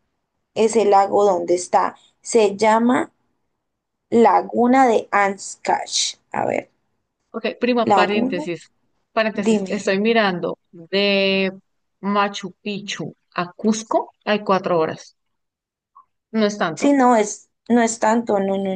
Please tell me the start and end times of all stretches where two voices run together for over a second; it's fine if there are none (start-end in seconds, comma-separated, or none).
none